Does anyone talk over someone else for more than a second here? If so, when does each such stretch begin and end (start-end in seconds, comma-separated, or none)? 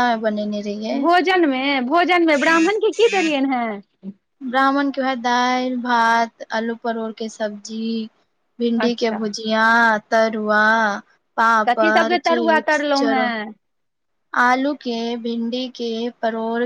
11.7-13.3